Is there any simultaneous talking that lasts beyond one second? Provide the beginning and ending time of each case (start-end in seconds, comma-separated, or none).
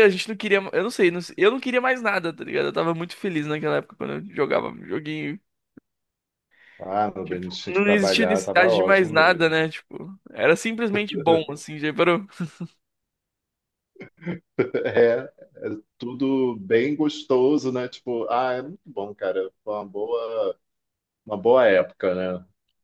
7.2-9.5